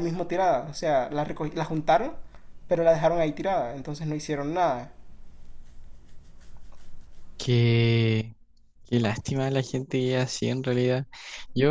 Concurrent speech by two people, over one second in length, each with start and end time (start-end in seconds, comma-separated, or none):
none